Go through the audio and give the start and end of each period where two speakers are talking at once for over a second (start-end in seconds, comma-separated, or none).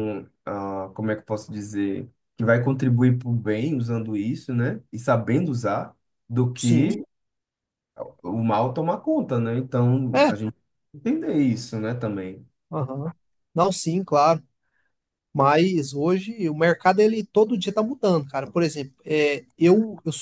none